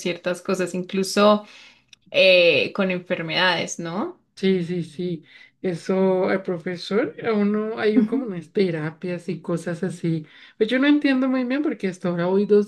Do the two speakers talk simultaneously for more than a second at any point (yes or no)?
no